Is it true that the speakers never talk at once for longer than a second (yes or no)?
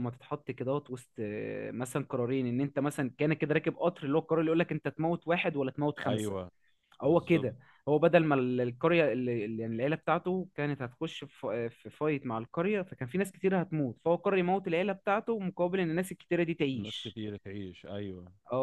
yes